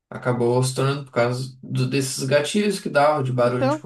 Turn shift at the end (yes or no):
yes